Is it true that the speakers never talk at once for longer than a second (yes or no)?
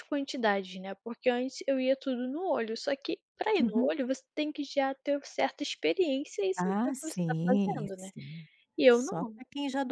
no